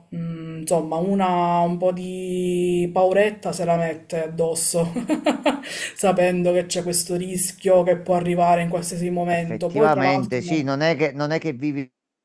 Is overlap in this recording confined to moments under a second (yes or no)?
no